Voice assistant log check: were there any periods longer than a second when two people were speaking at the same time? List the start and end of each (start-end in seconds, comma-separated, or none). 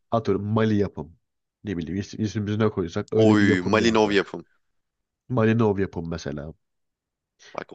3.1-4.4